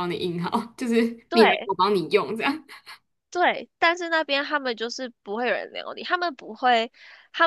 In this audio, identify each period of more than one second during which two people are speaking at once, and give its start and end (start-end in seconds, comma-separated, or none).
none